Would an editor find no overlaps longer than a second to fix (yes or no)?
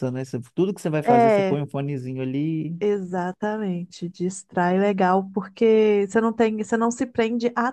yes